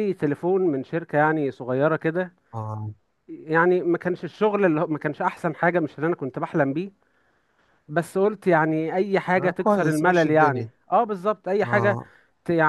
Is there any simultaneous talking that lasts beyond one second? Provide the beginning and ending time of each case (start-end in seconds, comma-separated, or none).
9.4-10.7